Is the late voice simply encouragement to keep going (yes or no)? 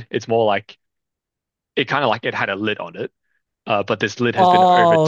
no